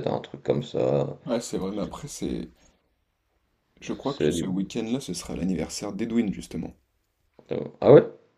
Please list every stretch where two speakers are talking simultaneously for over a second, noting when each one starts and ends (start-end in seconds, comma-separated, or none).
none